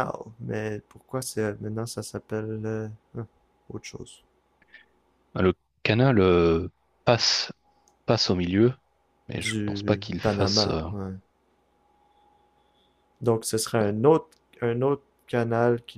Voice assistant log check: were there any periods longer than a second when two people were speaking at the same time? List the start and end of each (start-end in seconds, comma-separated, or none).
9.3-10.8